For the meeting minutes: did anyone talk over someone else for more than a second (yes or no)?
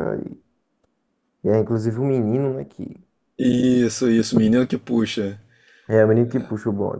no